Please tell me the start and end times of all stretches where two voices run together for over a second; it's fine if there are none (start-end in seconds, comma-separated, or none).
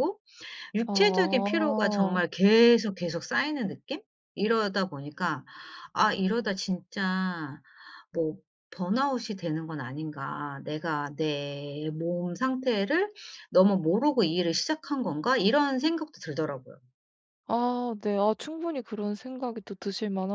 0.9-2.2